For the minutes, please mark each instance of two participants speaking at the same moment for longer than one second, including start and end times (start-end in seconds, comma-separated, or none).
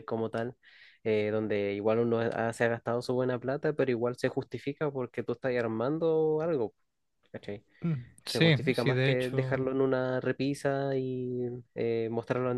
8.2-9.6